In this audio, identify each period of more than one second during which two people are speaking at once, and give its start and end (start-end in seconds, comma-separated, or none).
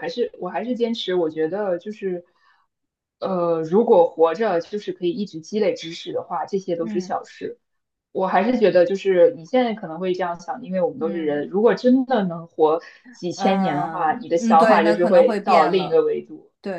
13.4-16.0